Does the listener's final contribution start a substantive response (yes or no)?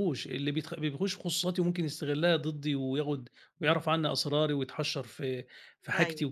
no